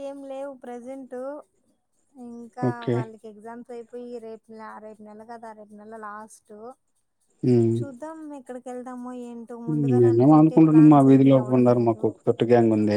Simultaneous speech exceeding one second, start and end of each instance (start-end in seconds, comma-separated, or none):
10.0-12.0